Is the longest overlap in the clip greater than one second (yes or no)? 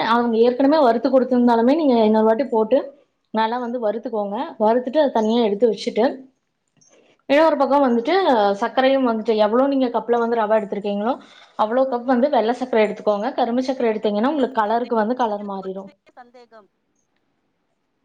yes